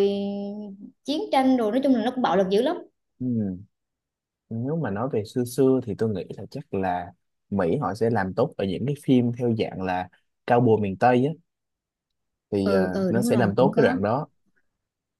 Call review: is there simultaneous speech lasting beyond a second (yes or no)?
yes